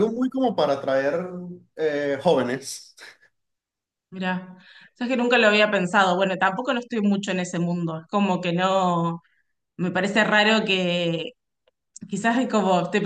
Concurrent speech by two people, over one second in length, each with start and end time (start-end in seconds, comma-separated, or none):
none